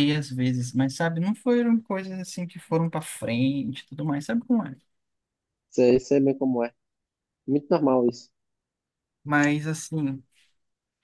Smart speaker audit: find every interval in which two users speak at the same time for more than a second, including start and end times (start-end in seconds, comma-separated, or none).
none